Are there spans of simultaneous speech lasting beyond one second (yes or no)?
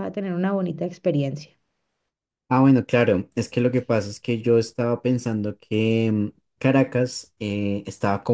no